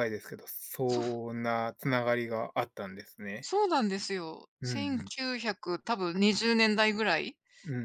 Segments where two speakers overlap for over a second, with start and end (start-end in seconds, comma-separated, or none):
none